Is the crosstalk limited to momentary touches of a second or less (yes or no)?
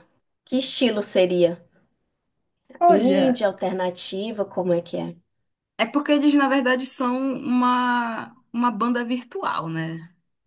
yes